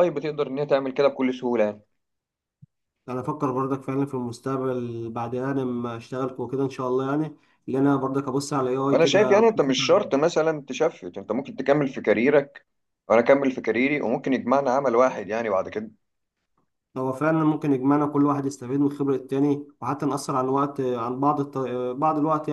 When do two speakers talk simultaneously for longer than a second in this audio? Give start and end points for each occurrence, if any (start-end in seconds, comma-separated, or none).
8.9-10.1